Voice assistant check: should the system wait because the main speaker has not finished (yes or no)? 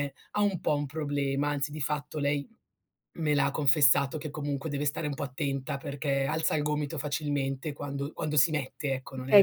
no